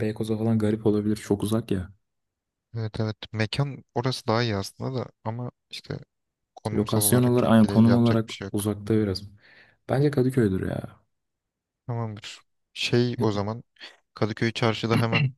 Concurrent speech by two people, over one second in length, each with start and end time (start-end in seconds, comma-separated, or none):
6.7-8.7